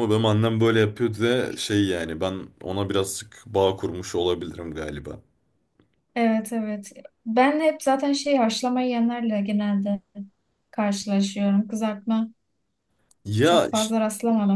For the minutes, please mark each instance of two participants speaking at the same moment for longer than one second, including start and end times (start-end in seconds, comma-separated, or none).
none